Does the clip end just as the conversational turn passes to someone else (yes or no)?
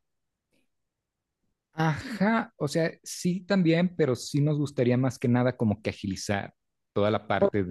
no